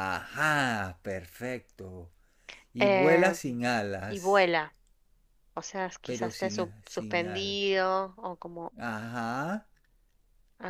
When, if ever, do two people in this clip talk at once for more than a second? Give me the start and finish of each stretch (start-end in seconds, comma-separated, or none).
6.0-7.6